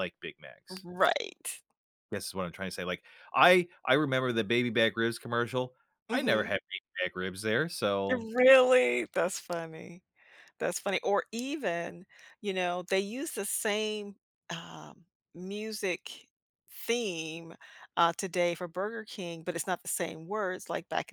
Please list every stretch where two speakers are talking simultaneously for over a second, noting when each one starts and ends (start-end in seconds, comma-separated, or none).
none